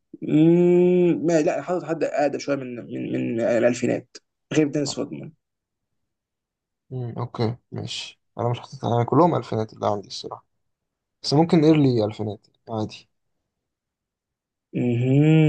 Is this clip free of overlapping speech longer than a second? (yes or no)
yes